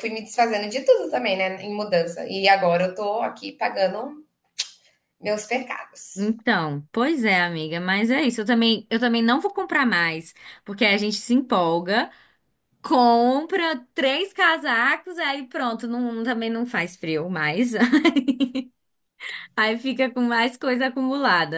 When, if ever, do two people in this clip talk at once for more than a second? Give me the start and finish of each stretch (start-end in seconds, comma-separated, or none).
none